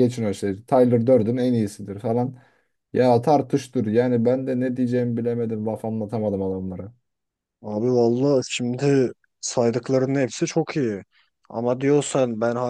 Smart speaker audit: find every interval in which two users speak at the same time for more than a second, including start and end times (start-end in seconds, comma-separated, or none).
none